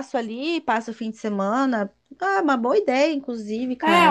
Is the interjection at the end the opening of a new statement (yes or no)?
yes